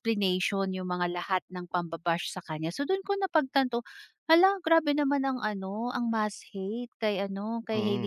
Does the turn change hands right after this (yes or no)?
yes